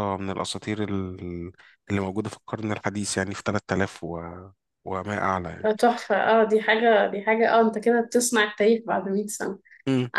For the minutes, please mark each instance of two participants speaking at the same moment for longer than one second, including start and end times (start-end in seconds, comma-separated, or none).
none